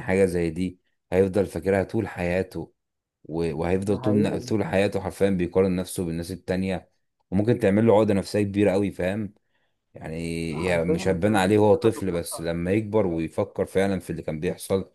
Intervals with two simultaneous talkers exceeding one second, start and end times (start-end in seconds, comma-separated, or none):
10.7-12.4